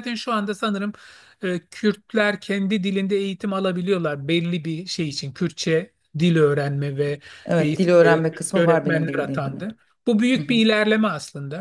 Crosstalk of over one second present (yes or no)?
yes